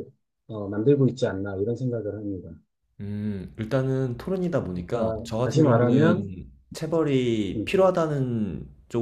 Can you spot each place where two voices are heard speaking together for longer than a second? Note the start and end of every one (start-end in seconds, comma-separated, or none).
4.9-6.2